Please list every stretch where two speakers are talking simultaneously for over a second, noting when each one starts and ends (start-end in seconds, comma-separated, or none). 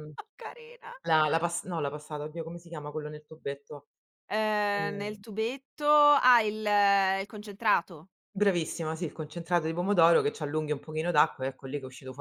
none